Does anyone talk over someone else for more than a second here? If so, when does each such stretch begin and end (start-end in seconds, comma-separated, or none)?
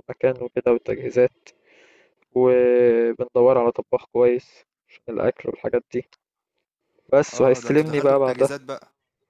7.3-8.5